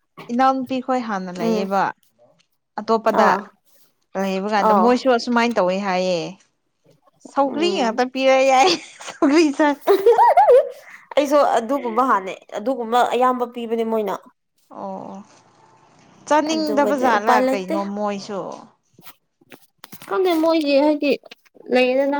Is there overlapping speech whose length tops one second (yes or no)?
yes